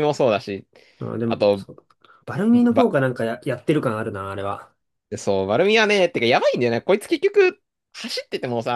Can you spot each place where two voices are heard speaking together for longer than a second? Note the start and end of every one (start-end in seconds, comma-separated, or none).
none